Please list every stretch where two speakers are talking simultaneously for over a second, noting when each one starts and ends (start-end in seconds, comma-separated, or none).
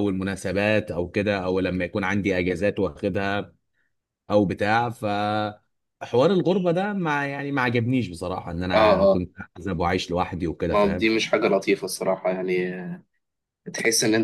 none